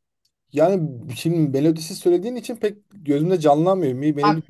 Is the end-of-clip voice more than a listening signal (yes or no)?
yes